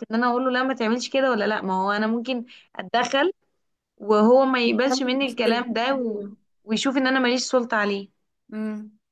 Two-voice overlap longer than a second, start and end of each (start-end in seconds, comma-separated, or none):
4.7-6.2